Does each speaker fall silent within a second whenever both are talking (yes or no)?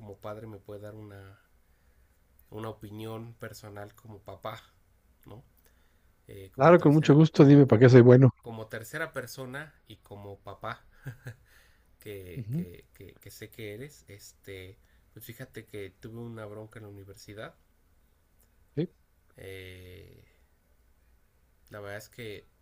no